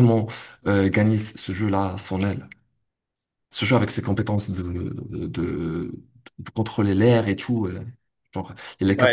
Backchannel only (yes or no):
no